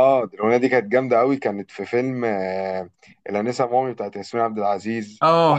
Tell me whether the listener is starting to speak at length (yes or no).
yes